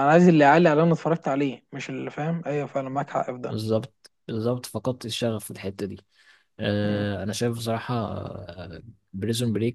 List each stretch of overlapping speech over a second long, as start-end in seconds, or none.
none